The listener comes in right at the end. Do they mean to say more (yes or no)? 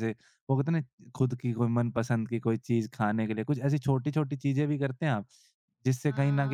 no